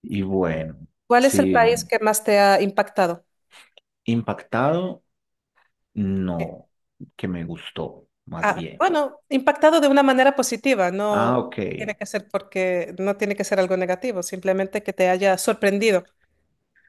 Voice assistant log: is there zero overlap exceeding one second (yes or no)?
yes